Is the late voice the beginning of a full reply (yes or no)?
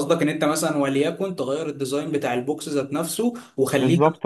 no